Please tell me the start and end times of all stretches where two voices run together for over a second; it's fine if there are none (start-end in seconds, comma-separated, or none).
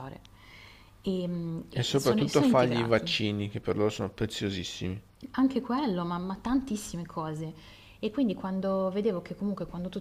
1.7-3.1